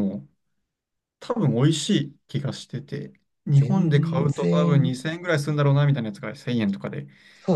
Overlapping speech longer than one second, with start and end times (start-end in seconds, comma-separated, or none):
3.5-5.0